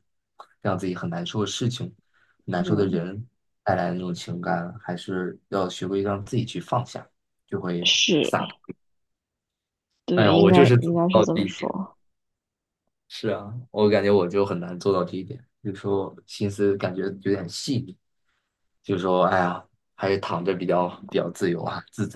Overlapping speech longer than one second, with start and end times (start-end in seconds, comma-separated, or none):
10.1-11.7